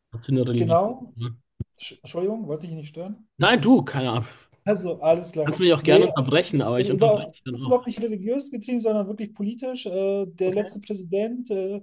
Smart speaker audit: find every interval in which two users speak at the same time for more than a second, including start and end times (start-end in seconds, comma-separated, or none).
5.5-7.8